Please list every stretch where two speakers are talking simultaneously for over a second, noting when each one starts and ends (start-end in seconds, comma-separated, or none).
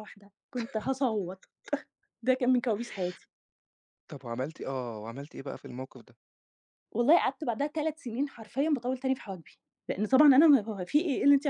none